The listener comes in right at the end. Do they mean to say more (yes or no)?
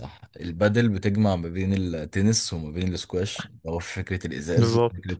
no